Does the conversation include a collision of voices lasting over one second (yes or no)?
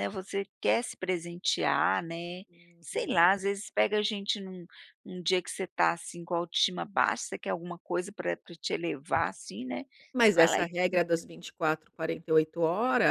no